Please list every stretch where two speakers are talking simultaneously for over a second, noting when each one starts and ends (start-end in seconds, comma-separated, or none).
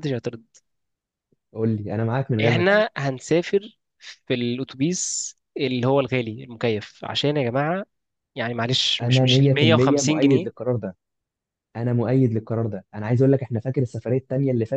9.0-10.5